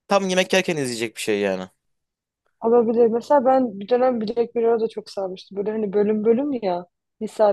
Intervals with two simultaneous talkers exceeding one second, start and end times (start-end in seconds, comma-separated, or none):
none